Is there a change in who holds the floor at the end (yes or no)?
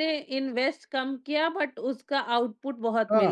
yes